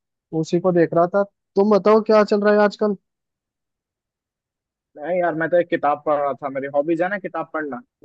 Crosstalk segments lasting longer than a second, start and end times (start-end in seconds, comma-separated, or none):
none